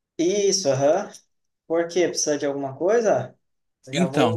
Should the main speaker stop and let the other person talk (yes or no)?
yes